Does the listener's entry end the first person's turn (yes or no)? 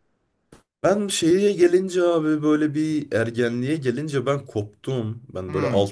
no